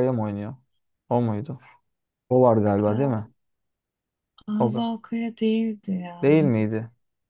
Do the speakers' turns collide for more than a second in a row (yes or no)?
no